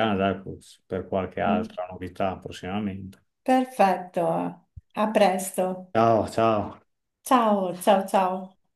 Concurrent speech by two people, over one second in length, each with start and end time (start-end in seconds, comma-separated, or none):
none